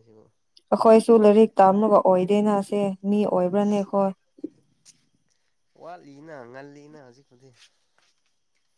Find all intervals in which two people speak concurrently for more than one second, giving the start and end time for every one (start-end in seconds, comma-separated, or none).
none